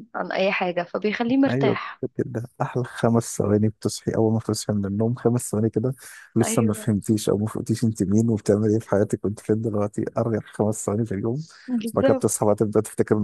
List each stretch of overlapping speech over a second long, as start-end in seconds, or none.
none